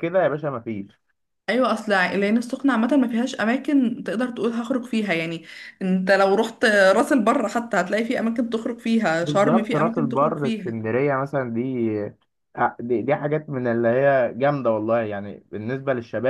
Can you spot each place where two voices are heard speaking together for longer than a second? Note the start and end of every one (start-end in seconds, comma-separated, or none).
9.2-10.8